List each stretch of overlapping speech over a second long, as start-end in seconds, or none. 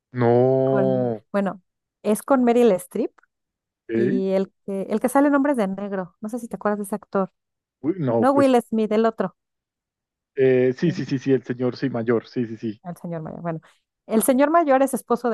none